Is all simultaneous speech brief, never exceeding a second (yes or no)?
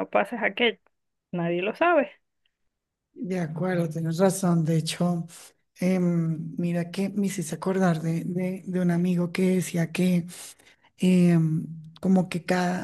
yes